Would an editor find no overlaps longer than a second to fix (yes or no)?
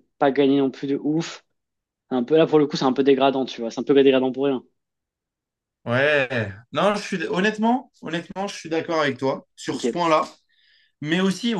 yes